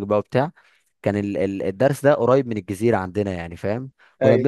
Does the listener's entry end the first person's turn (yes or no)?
no